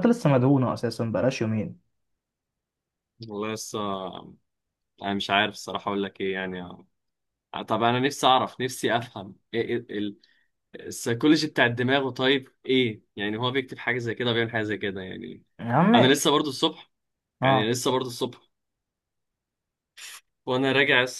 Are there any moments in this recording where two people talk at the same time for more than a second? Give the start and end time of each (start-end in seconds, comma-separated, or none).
none